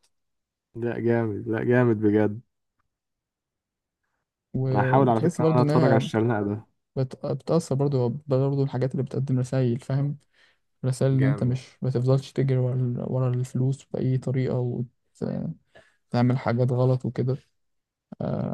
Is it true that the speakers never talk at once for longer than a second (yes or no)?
no